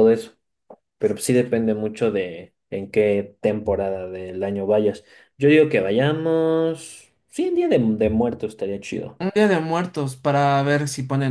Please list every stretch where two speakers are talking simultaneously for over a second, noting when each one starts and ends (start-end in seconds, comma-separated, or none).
none